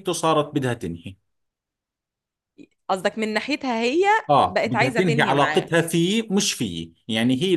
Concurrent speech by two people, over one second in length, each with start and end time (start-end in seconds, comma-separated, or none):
4.5-5.7